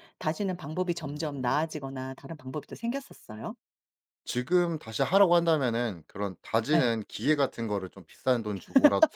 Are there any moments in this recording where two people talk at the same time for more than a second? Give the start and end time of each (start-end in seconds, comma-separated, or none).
none